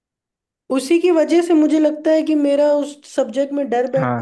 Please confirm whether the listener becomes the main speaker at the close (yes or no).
no